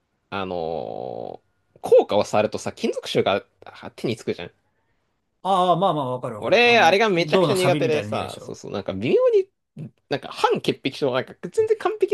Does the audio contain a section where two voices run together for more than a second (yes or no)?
yes